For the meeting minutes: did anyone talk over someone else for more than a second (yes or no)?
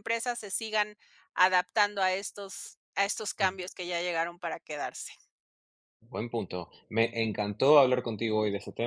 no